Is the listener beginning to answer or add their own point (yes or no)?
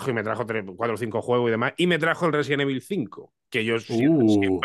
no